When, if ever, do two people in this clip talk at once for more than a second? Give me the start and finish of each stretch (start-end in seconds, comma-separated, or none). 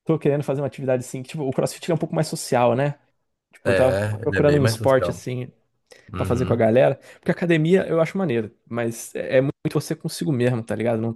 3.6-5.3